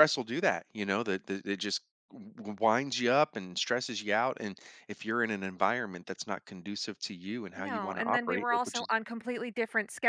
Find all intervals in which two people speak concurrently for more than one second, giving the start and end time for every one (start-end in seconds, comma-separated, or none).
7.6-8.9